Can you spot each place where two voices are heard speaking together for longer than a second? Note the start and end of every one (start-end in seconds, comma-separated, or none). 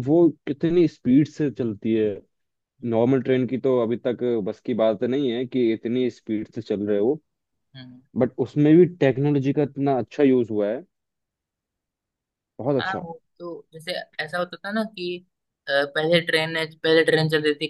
none